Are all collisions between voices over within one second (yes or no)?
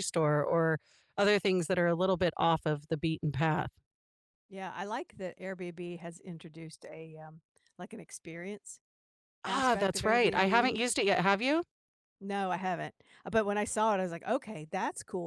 no